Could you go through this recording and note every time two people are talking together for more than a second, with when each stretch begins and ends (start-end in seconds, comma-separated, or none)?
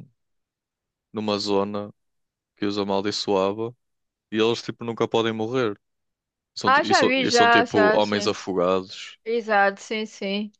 6.7-8.3